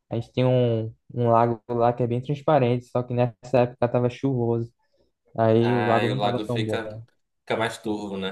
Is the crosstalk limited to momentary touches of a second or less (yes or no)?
no